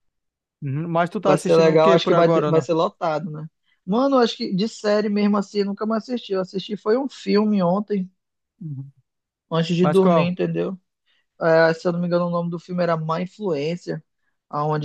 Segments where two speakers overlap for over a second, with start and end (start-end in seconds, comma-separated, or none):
1.2-2.7